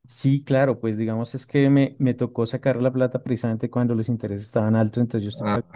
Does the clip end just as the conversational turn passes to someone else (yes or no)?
no